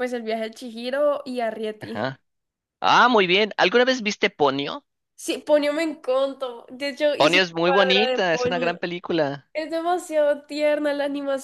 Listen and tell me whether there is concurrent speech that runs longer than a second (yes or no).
yes